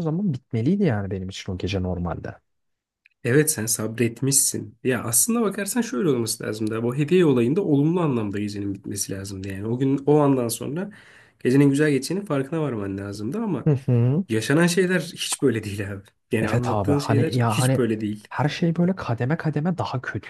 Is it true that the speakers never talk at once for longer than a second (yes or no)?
no